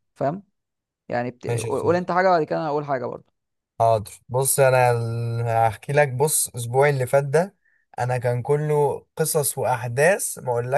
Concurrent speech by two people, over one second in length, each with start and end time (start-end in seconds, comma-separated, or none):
none